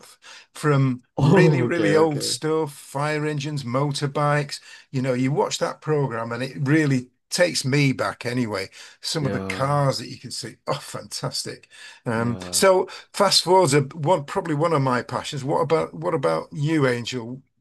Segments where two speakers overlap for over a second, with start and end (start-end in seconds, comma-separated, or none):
1.2-2.4